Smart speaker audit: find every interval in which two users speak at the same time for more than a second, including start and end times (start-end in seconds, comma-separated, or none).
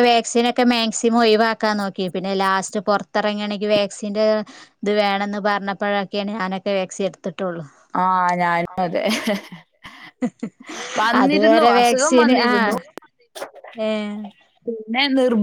11.2-12.7